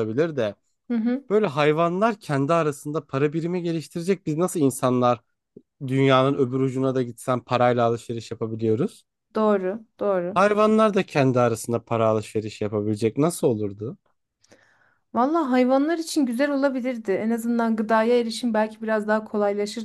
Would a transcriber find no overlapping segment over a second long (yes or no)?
yes